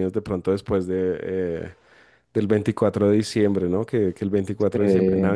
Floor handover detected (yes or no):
no